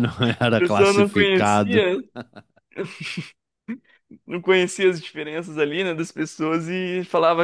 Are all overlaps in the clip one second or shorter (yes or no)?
no